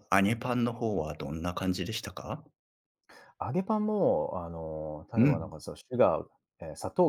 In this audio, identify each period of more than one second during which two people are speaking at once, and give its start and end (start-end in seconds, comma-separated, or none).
none